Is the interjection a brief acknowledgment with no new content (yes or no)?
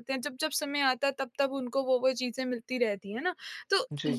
yes